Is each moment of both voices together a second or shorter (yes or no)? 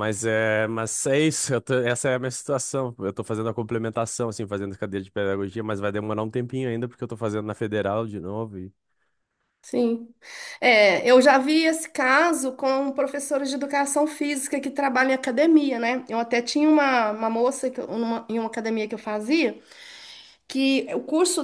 yes